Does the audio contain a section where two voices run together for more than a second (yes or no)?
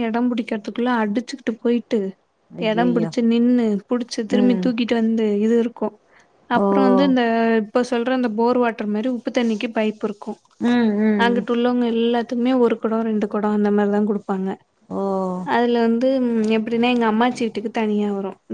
no